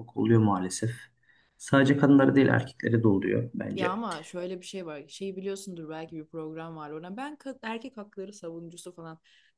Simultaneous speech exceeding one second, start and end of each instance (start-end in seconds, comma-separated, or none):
none